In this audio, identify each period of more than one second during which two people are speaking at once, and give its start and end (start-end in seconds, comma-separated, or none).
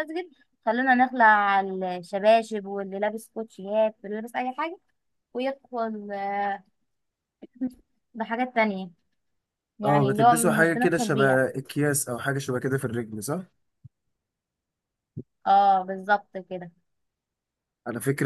9.8-11.4